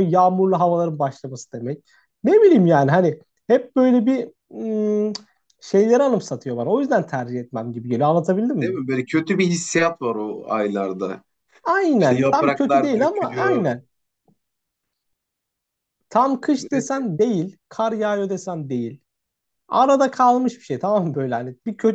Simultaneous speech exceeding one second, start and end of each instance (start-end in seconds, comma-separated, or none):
12.0-13.7